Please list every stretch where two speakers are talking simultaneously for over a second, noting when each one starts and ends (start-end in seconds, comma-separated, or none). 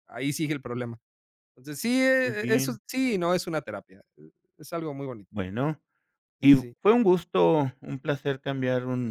none